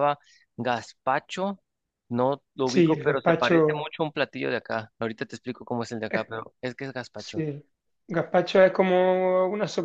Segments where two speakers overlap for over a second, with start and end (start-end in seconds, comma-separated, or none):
2.7-3.9